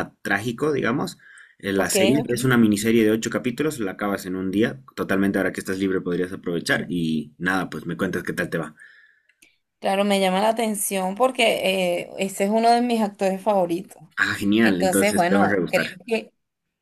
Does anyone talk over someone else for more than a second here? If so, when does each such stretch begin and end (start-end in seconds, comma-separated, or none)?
14.6-16.0